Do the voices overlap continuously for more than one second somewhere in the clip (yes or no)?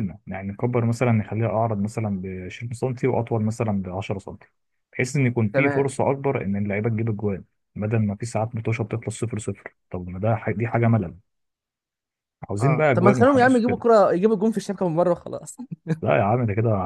yes